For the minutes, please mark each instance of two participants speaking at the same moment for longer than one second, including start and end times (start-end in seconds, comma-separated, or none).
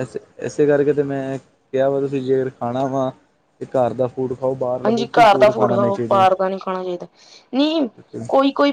none